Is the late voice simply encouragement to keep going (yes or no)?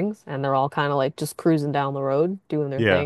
yes